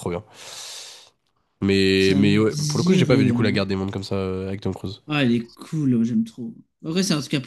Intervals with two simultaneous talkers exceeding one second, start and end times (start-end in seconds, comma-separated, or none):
2.0-3.6